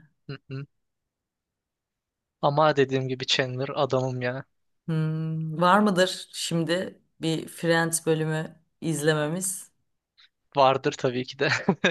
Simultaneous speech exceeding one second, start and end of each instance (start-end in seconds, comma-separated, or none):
none